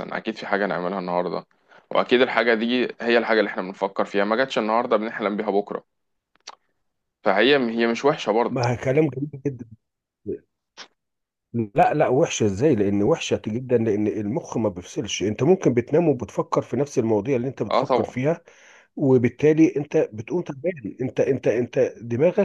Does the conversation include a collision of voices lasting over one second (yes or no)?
no